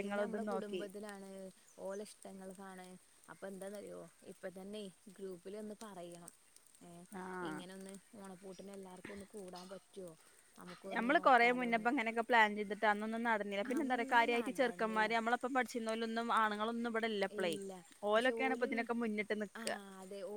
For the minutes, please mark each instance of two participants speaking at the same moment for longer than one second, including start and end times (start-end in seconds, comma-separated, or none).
13.8-15.2